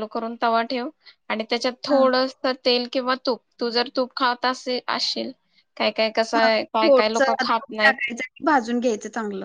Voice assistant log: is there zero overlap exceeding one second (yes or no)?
no